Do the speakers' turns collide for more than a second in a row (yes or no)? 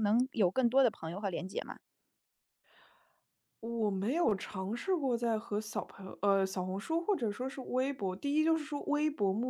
no